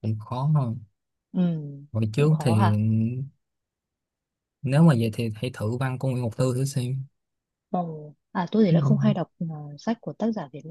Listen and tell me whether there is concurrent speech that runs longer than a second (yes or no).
no